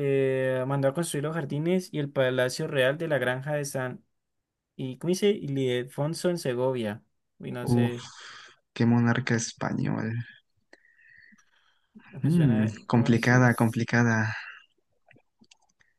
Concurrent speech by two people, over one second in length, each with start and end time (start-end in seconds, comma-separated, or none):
12.2-13.7